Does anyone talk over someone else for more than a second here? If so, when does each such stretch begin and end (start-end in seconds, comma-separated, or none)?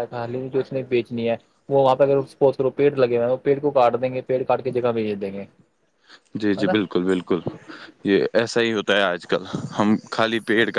none